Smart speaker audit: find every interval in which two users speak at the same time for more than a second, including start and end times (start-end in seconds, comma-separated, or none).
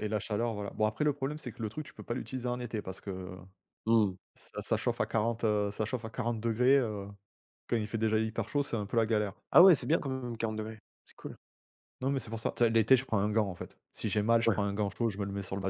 none